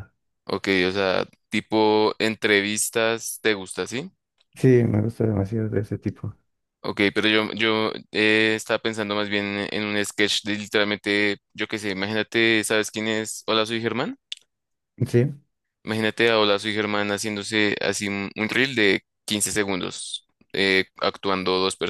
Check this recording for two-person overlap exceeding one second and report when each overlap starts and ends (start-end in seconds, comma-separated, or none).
none